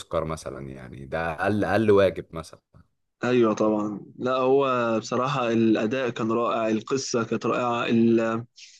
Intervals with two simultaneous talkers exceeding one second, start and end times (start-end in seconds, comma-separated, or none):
none